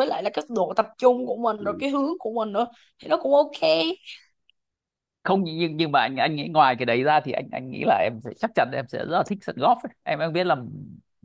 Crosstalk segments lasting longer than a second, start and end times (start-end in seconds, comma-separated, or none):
none